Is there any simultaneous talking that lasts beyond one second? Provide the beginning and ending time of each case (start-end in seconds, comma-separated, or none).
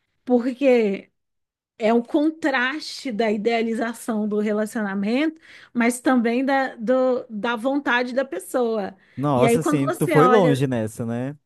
9.3-10.6